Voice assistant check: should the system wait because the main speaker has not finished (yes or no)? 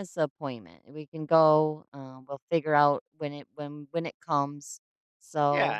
no